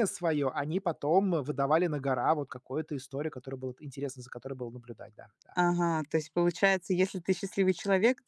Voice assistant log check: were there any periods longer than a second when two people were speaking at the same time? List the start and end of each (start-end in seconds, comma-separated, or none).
none